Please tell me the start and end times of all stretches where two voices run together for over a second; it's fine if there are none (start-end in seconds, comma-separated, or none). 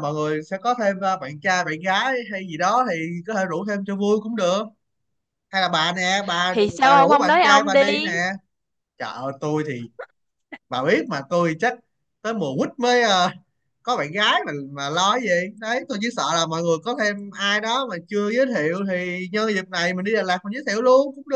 6.5-8.1